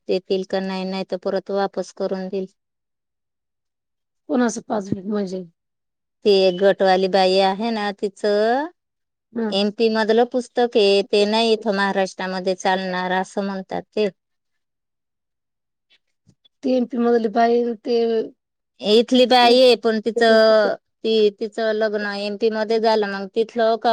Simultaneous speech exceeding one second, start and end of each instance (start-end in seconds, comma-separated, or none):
none